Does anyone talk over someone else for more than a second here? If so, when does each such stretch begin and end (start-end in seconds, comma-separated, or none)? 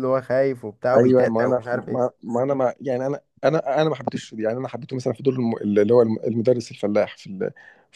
0.9-2.1